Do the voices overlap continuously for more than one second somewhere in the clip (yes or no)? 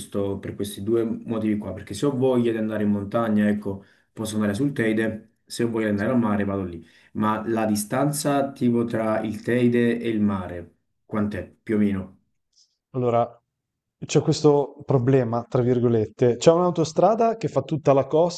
no